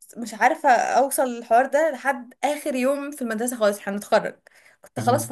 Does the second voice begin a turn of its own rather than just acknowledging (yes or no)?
no